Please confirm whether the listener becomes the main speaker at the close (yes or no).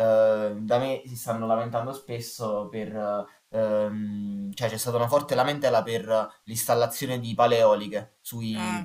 no